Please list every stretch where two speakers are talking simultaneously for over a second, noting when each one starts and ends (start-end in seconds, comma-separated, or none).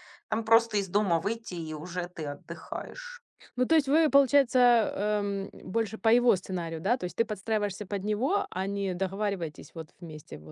none